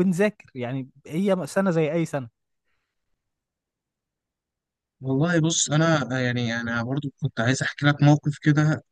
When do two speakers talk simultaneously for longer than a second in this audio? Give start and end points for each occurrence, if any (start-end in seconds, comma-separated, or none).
none